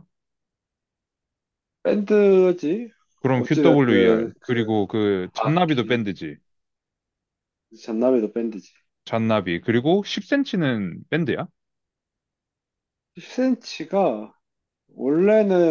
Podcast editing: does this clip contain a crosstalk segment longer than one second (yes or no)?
yes